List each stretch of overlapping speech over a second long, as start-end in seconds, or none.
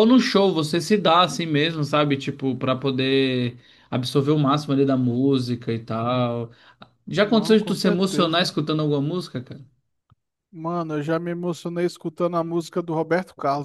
7.2-8.5